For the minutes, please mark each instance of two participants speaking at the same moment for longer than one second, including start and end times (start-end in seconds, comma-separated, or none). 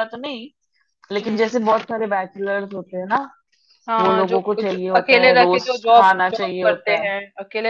4.0-7.1